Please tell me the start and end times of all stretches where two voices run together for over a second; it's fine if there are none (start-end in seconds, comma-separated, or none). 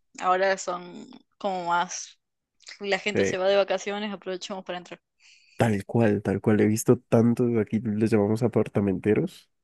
none